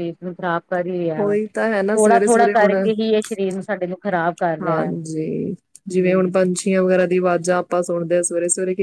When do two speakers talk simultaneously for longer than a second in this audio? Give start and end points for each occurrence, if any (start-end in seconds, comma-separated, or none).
1.2-2.7